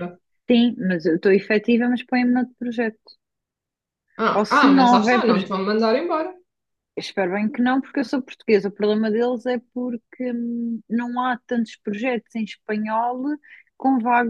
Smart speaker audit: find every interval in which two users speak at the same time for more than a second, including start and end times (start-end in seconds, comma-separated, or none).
4.3-5.5